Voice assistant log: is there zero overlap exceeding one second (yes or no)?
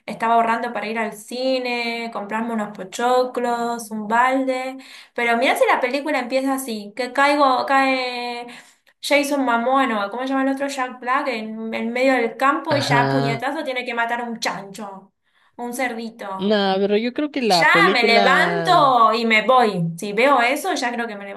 no